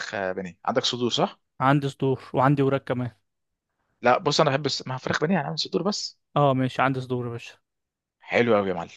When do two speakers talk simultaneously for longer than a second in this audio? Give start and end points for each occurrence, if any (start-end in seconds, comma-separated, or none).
none